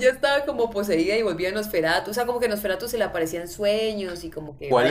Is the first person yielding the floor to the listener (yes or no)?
yes